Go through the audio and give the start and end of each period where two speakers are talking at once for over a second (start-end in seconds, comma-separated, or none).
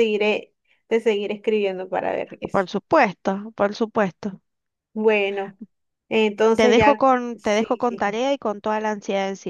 6.5-8.1